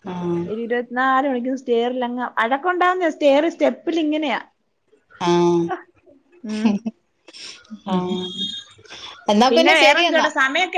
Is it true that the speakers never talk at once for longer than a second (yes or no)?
yes